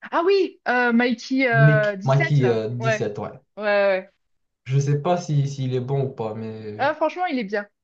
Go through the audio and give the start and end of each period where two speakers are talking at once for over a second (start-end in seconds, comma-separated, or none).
1.5-3.1